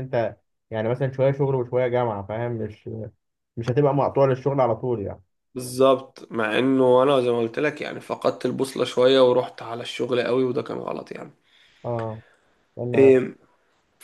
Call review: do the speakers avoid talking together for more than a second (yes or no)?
yes